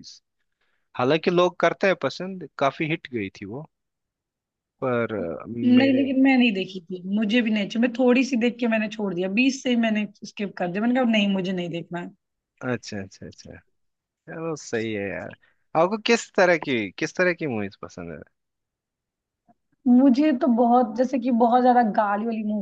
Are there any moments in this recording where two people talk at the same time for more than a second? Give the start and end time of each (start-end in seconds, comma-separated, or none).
none